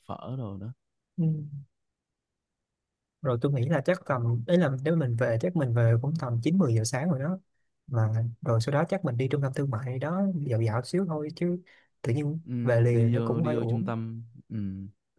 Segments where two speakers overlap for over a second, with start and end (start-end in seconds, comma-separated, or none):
12.4-13.9